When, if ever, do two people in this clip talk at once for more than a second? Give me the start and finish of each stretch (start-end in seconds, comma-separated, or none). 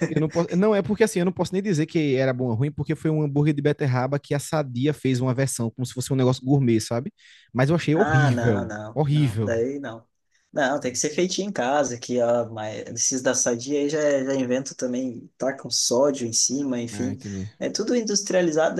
8.0-9.6